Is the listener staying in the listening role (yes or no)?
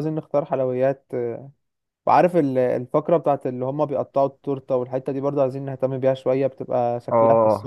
no